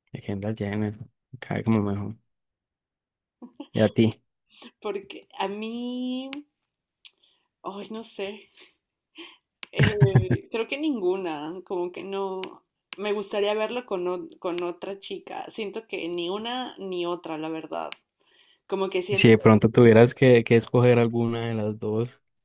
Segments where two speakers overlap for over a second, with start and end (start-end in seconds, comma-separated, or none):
none